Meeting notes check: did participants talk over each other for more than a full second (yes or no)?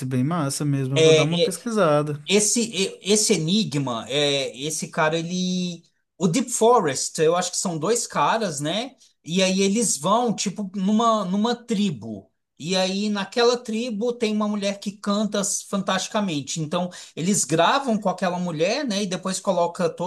no